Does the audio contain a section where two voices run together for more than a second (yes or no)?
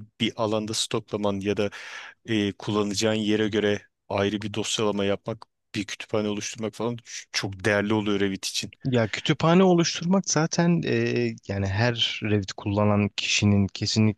no